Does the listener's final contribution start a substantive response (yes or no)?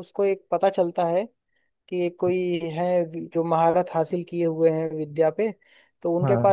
no